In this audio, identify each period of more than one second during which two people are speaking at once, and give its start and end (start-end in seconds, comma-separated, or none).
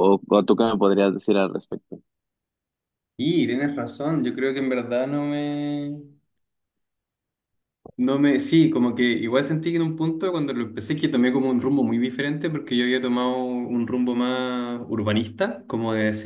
none